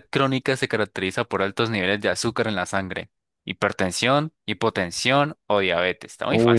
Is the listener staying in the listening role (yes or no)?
no